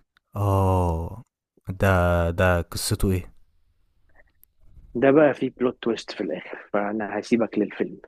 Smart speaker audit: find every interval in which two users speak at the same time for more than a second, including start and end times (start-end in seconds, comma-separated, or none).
none